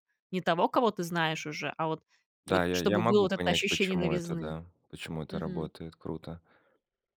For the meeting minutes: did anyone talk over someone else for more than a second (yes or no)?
yes